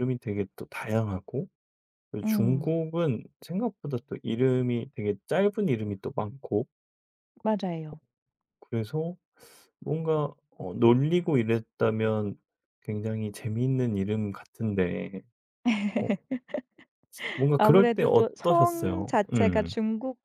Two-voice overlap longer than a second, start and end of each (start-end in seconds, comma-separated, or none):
17.6-19.7